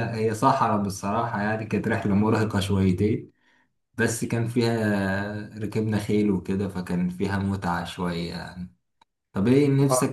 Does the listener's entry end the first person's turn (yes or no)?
yes